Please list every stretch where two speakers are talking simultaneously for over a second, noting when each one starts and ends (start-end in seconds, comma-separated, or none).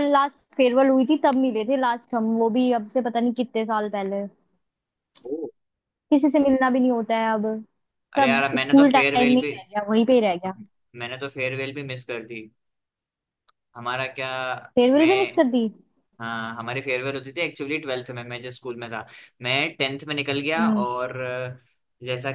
8.2-9.5